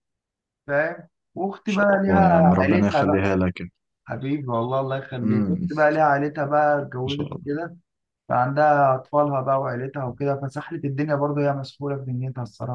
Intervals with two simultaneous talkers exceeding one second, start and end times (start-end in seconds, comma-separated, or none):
1.6-3.3